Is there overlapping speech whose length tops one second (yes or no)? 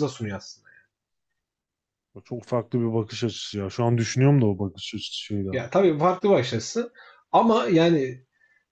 no